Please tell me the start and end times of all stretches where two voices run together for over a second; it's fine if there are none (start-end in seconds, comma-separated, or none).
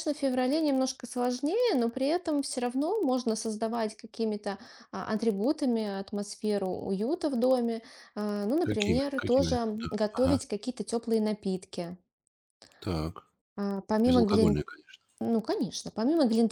8.6-10.4